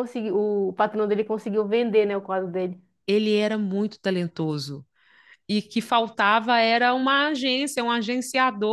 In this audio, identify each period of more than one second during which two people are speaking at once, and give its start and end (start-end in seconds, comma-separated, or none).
none